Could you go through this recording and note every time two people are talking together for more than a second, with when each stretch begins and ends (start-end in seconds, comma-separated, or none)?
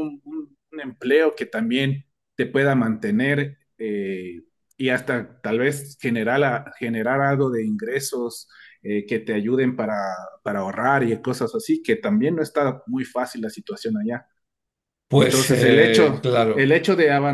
15.1-16.7